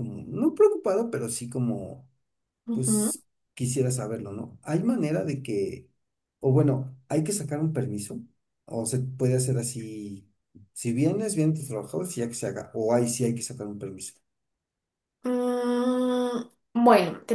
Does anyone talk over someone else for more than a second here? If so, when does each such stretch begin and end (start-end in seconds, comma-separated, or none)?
none